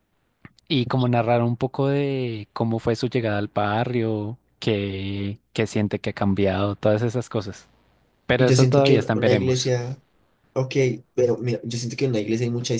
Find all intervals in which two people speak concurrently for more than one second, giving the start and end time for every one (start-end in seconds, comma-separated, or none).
8.3-9.7